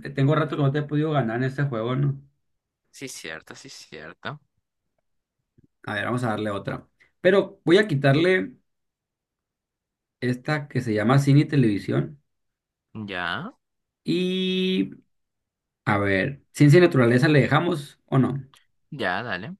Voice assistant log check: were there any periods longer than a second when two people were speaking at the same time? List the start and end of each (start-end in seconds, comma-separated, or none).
none